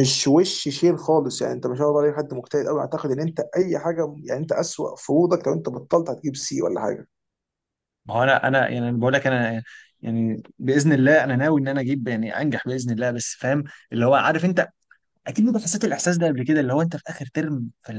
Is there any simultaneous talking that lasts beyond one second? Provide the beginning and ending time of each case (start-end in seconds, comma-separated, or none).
none